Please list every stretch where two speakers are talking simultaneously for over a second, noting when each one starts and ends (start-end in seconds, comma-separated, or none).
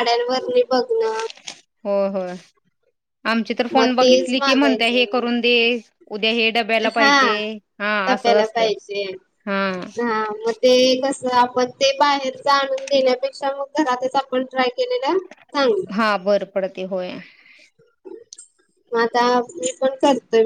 3.7-5.2